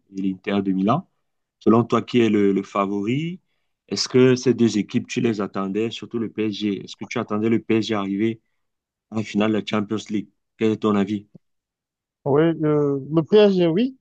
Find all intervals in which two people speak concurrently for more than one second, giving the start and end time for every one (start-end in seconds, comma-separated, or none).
none